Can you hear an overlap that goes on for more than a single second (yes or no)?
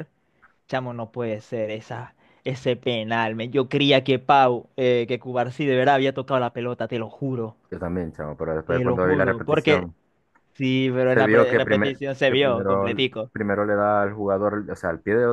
yes